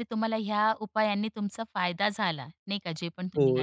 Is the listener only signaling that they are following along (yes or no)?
no